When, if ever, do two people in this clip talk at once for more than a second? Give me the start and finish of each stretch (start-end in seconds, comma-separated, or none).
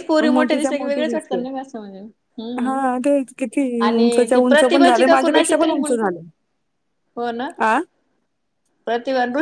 4.3-6.1